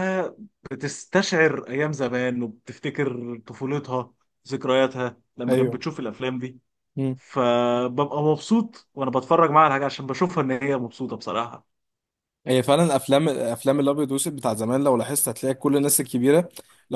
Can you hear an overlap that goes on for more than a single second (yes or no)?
no